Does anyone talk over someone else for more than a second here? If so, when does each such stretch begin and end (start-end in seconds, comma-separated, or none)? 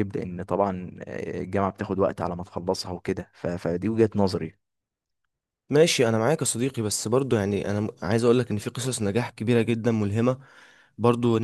none